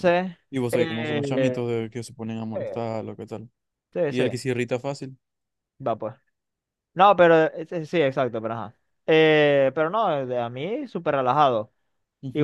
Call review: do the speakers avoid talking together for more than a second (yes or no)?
no